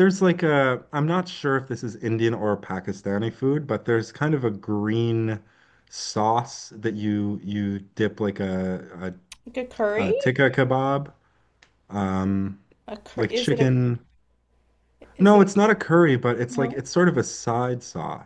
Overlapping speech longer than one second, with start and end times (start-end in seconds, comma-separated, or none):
none